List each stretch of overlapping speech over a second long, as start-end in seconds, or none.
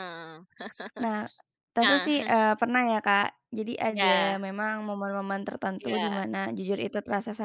none